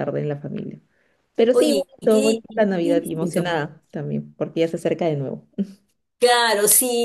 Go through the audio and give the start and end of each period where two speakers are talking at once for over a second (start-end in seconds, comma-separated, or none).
1.5-3.6